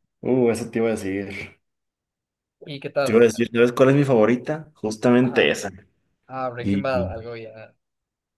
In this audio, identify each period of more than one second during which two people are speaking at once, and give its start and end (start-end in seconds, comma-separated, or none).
none